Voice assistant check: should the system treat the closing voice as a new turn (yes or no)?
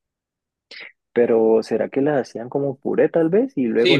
yes